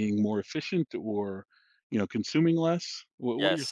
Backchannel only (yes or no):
no